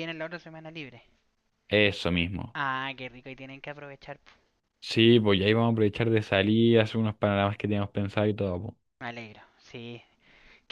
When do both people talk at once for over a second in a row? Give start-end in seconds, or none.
none